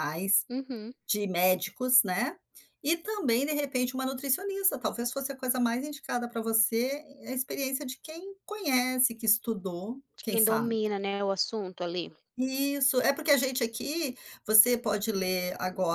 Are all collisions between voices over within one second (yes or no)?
yes